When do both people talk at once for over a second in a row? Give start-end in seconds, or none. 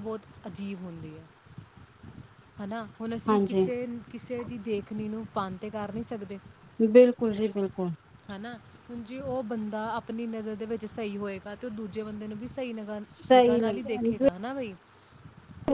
13.1-14.4